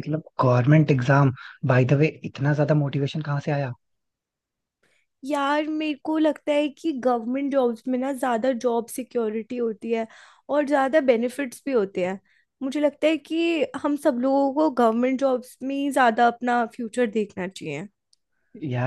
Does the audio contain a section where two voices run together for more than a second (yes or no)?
no